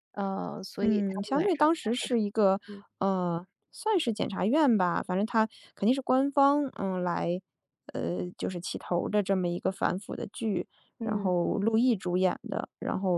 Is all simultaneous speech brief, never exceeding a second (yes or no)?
no